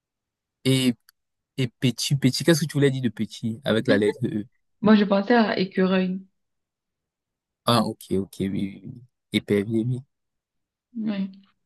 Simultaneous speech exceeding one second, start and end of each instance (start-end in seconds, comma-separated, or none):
none